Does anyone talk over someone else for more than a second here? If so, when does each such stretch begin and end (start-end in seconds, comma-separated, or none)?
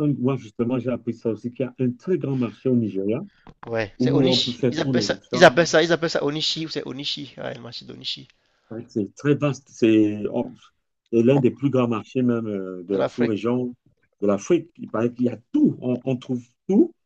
4.0-5.5